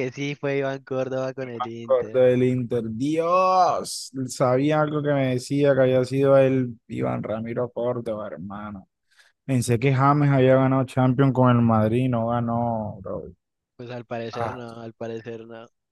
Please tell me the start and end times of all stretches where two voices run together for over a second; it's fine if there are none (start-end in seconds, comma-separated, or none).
none